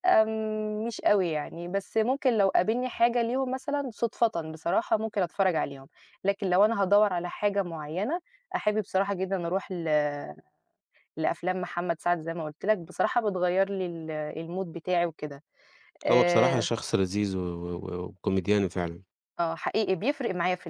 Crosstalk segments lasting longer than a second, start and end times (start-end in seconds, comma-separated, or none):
none